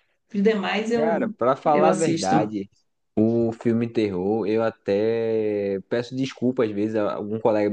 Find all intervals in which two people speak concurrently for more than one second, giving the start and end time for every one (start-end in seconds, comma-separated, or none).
0.9-2.5